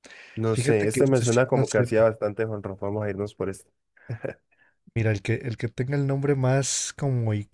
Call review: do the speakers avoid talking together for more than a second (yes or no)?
no